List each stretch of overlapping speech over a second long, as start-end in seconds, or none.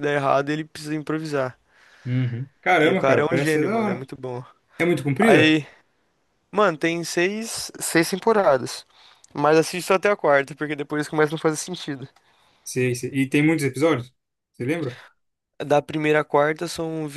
2.8-4.1